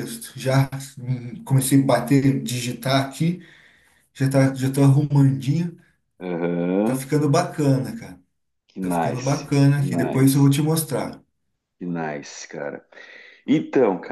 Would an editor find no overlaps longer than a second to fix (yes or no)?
no